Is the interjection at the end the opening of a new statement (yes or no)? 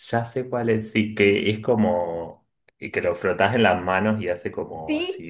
no